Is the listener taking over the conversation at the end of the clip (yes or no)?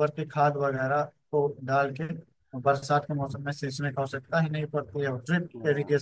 no